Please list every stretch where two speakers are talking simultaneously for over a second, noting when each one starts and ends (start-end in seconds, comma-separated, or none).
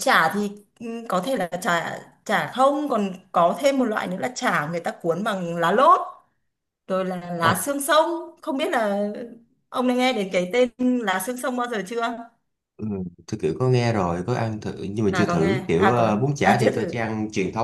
15.1-16.9